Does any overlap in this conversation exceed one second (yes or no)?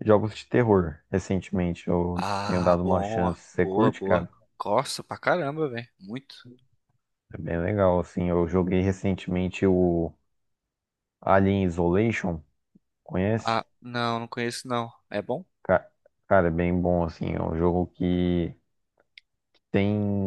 yes